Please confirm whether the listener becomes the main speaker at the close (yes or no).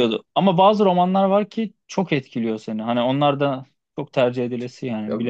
yes